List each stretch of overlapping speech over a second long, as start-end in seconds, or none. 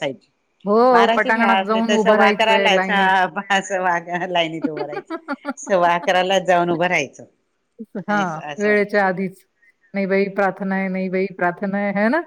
0.9-2.9